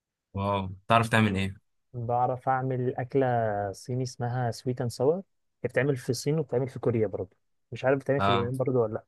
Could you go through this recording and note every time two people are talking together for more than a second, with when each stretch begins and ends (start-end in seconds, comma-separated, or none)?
none